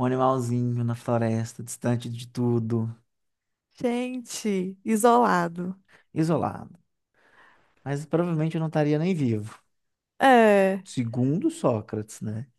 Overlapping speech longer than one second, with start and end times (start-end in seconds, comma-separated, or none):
none